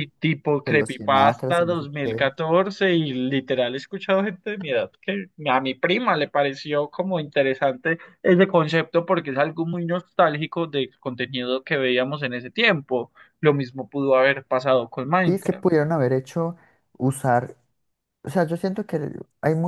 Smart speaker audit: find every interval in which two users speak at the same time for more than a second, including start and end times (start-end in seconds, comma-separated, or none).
0.6-2.2